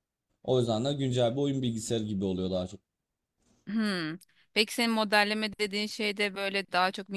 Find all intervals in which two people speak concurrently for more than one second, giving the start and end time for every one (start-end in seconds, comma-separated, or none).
none